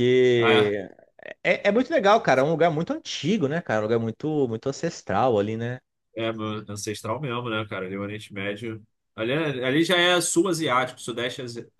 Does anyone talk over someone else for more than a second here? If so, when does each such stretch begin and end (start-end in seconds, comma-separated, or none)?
none